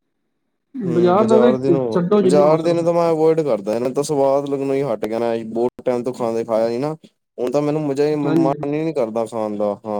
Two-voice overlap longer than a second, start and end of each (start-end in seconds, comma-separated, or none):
1.3-2.9